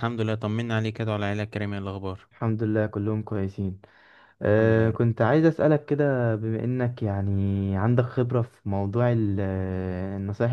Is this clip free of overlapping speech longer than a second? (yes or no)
yes